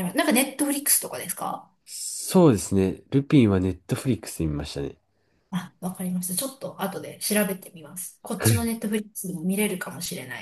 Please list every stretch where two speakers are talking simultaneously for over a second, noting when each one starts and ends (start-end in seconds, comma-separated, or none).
none